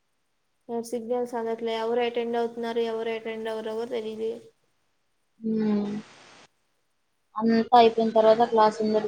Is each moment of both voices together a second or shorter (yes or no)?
yes